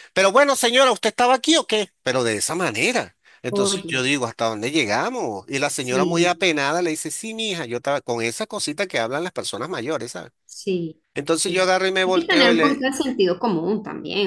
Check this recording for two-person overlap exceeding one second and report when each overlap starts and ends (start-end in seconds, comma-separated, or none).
11.2-12.8